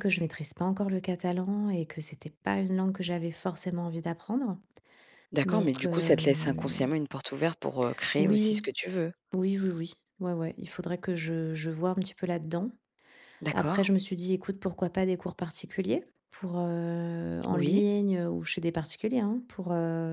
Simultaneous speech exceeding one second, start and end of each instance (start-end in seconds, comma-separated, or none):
5.4-6.8